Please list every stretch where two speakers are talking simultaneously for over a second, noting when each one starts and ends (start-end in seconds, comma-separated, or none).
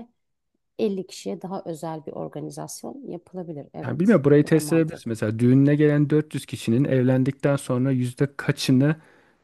3.8-5.1